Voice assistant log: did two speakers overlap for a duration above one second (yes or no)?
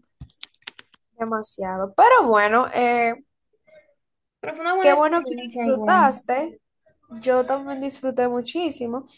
yes